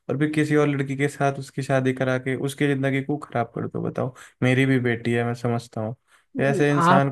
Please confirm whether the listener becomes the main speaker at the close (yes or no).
yes